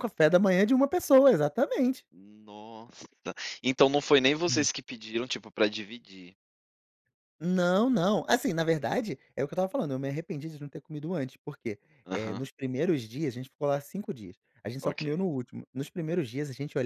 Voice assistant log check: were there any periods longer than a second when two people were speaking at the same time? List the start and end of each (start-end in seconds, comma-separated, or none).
none